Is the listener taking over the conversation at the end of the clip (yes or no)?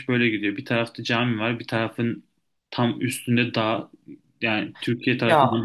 no